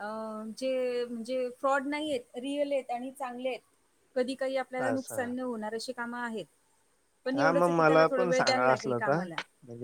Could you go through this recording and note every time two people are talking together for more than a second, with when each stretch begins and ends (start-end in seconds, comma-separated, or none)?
7.3-9.2